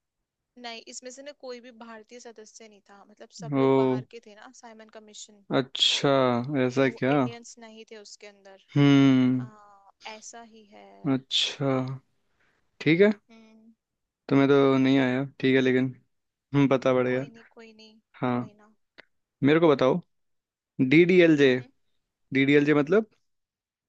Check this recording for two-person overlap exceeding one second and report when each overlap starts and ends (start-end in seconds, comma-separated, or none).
none